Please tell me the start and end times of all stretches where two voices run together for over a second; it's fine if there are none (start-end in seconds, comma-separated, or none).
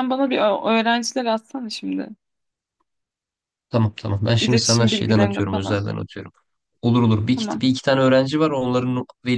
4.4-5.8